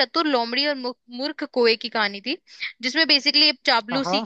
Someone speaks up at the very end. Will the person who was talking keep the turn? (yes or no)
yes